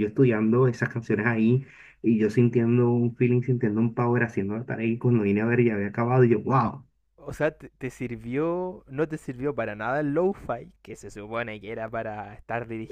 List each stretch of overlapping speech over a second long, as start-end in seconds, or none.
none